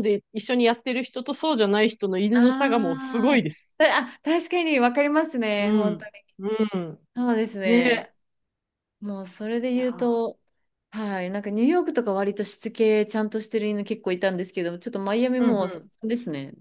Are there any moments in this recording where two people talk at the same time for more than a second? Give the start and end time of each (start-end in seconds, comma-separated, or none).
2.3-3.7